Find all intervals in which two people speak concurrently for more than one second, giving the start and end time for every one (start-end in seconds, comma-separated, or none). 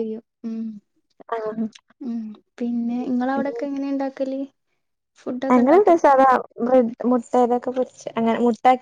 none